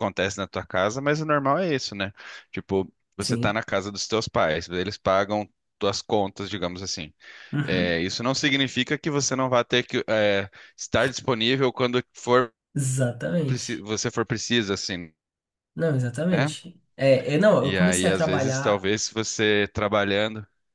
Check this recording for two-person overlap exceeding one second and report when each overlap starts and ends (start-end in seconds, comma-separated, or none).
17.6-18.9